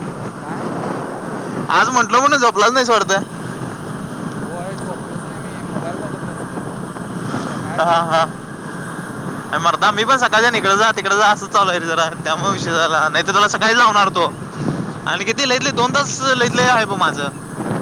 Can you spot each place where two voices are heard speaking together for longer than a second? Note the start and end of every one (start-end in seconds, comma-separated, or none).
none